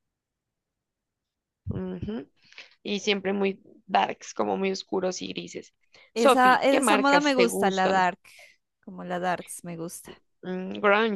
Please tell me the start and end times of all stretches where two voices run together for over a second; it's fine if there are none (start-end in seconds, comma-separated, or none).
6.1-8.1